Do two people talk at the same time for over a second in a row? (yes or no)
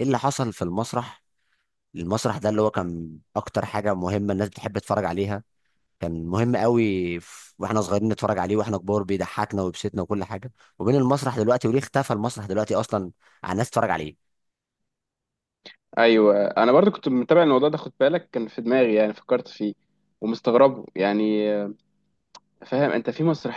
no